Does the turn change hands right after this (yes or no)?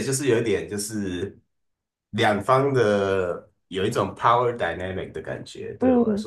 yes